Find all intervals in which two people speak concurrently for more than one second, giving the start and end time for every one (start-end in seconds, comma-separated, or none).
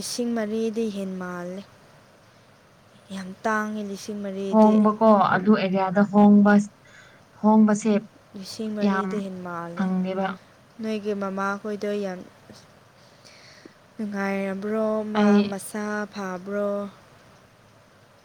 none